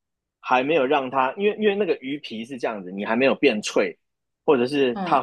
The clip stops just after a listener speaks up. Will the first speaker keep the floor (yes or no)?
yes